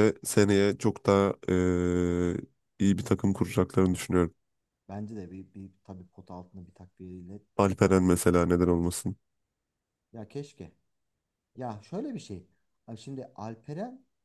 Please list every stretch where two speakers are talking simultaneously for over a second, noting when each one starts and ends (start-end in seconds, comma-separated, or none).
7.6-8.9